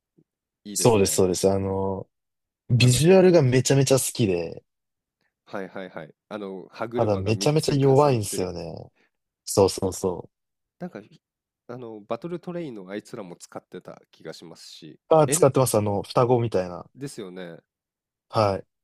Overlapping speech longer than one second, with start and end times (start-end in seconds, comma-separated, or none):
7.0-8.5